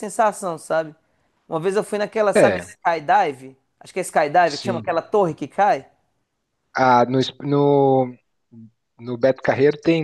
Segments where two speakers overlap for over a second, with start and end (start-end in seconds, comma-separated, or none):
none